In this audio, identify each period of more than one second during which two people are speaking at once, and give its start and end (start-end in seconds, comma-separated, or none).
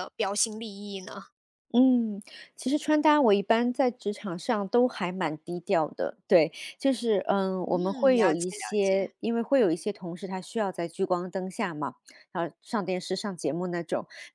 7.7-9.1